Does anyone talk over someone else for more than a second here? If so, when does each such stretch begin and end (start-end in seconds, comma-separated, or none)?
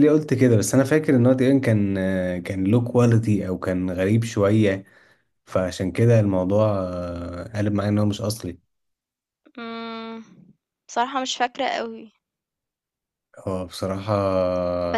none